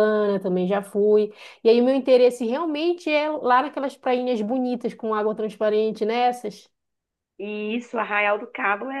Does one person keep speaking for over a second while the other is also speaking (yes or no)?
no